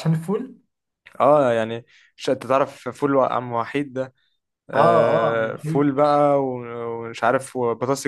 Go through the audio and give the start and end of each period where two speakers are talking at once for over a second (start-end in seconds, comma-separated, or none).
4.7-6.0